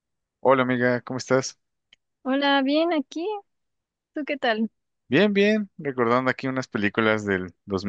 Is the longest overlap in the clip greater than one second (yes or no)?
no